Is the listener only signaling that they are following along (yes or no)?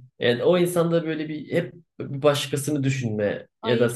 yes